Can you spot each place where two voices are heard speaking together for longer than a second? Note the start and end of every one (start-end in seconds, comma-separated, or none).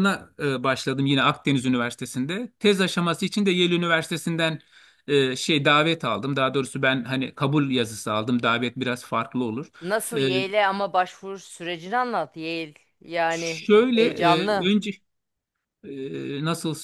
13.3-14.7